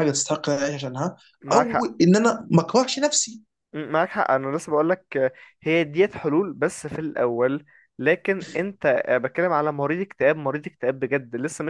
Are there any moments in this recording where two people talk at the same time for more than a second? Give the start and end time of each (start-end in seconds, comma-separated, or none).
none